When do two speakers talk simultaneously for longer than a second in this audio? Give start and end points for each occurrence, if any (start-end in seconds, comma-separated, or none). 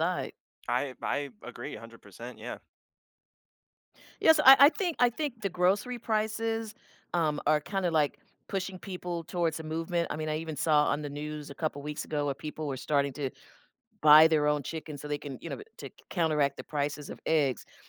none